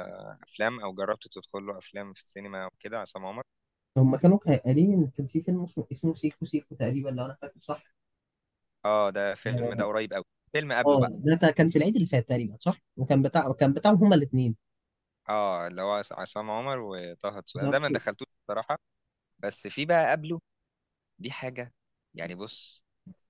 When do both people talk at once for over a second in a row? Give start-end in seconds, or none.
none